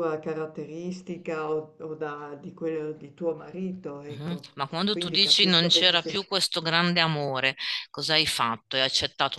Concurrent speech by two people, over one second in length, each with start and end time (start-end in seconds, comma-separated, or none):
4.0-6.1